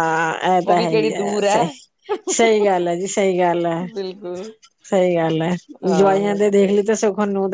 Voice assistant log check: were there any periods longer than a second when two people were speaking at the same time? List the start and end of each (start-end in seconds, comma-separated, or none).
none